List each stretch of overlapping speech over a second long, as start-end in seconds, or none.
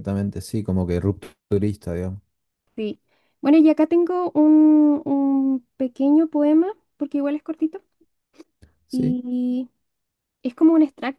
none